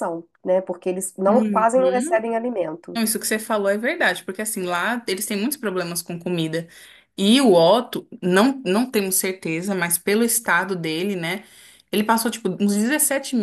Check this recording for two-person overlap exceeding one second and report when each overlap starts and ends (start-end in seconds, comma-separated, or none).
none